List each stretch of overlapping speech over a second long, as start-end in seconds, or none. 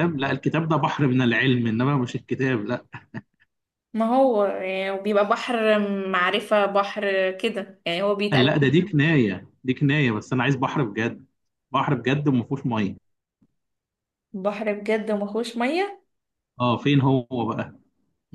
none